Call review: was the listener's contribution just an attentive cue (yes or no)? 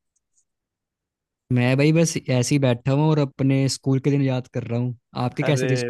no